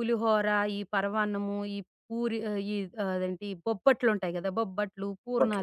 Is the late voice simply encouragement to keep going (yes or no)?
yes